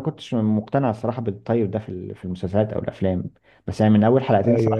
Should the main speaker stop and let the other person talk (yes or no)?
no